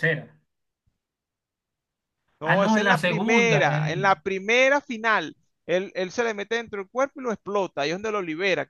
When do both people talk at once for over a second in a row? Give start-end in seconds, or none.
2.4-4.1